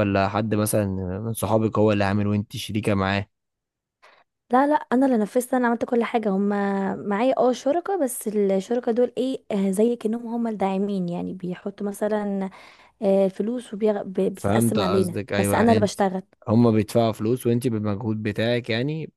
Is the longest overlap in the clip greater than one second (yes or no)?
yes